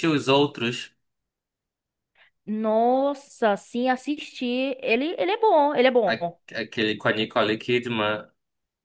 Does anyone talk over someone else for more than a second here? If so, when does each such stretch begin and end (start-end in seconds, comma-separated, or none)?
none